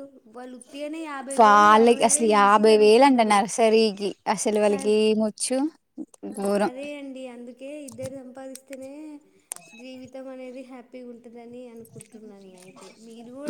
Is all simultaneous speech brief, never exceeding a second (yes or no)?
no